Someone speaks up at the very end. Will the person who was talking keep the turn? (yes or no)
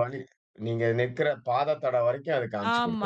no